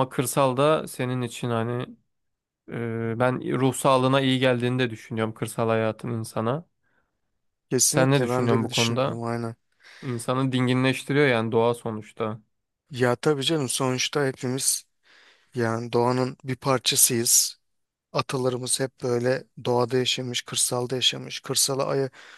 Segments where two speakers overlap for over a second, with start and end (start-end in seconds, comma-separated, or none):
7.9-9.2